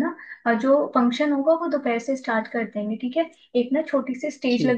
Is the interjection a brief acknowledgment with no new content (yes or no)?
yes